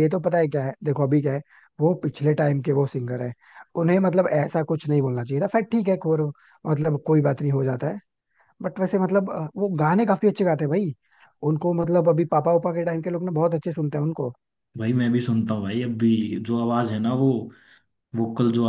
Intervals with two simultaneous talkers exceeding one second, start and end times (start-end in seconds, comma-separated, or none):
none